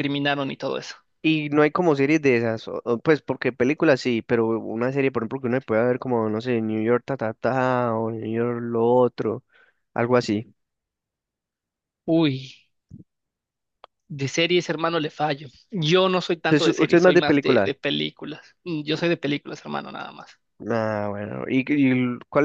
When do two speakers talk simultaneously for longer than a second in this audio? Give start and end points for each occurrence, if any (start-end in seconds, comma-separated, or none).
16.5-17.7